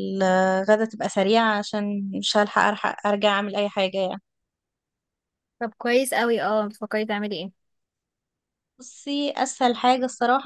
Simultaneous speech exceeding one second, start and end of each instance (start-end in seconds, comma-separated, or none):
none